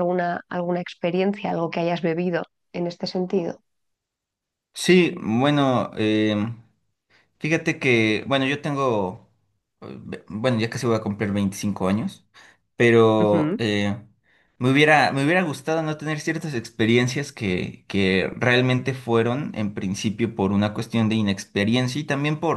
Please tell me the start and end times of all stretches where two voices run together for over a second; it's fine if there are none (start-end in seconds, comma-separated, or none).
none